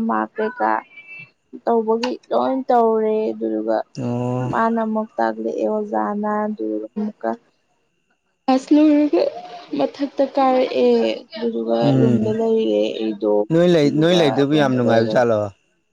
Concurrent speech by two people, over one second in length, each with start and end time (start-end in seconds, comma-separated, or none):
13.7-15.2